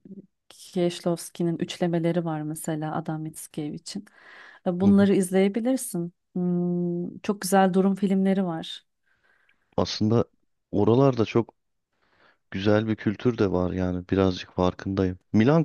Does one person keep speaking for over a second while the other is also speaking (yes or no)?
no